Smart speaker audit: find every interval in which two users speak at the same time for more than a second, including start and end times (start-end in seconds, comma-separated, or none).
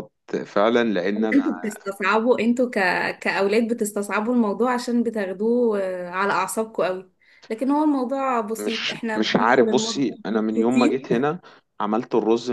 8.6-11.0